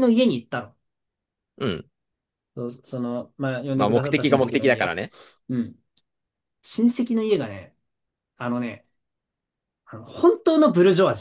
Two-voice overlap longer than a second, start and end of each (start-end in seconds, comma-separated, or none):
3.7-5.0